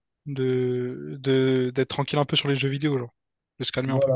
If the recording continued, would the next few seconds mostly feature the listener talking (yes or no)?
yes